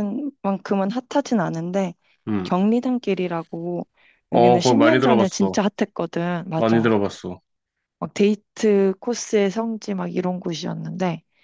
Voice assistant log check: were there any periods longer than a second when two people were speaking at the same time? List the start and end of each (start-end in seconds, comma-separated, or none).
4.3-5.5